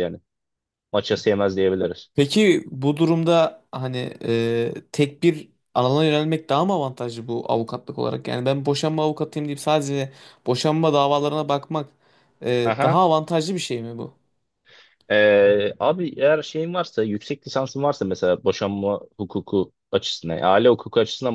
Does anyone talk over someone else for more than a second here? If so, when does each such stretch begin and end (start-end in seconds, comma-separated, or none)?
none